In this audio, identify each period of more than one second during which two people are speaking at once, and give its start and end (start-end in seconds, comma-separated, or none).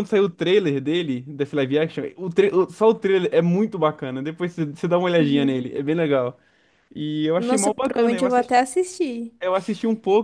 7.4-8.6